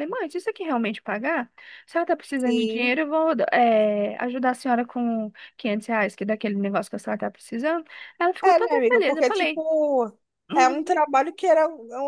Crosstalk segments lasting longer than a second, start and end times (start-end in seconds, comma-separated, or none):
8.4-9.6